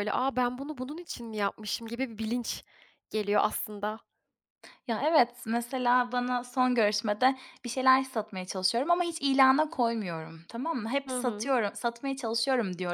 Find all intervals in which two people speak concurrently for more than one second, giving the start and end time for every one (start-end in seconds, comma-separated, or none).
none